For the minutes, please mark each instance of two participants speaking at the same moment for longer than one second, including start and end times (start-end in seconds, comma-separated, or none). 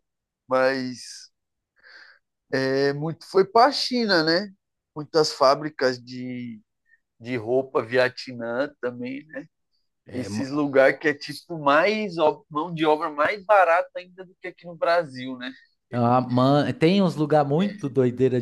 none